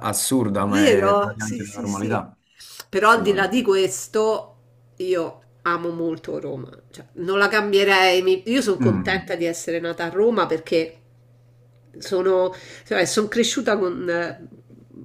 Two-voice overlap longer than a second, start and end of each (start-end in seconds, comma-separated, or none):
0.7-2.3